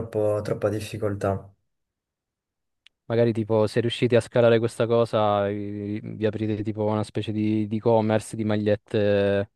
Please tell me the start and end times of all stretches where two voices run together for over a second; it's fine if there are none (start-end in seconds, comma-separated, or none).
none